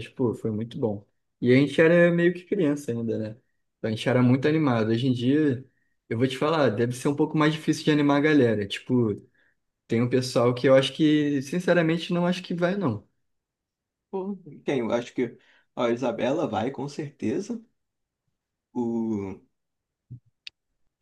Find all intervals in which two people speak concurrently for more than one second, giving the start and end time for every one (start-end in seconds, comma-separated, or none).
none